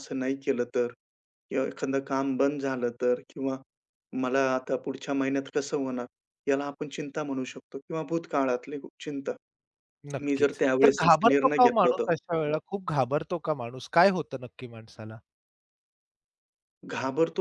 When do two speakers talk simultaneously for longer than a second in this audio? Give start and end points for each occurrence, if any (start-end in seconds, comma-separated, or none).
10.2-12.1